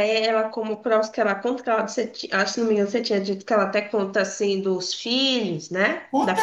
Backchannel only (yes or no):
no